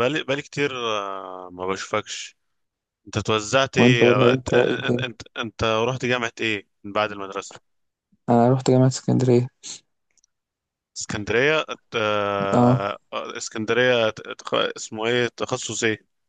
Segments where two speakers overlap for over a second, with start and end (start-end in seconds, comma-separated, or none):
3.8-5.1